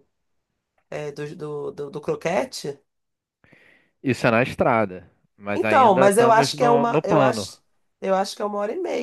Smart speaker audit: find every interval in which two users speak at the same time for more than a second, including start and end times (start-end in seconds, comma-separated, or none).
5.5-7.5